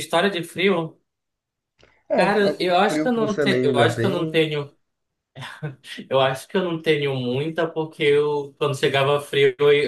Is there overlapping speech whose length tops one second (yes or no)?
yes